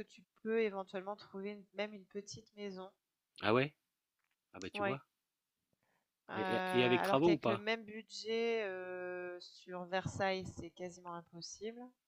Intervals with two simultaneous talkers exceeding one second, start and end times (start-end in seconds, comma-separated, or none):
6.3-7.7